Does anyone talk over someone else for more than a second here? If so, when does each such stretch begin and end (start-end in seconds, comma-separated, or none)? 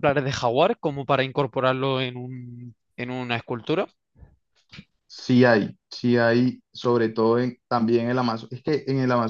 none